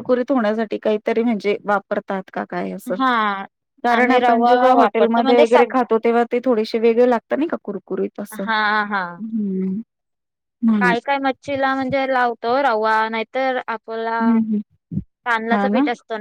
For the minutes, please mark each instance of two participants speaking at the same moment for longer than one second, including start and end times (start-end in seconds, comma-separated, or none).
4.0-5.7